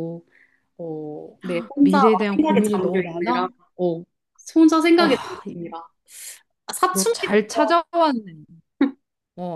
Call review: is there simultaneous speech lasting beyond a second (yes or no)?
yes